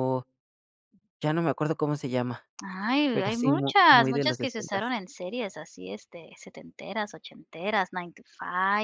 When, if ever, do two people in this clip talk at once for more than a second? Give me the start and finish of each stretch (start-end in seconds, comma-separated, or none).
3.1-4.8